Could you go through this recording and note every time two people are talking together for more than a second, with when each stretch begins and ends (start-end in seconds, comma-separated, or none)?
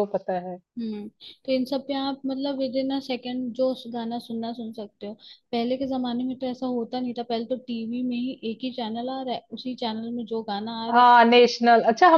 none